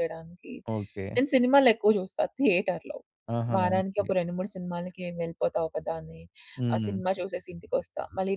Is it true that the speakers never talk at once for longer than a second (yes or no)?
yes